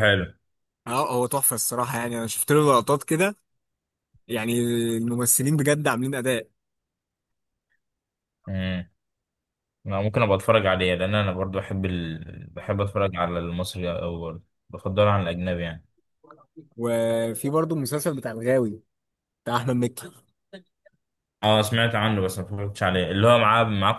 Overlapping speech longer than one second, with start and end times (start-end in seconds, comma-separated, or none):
none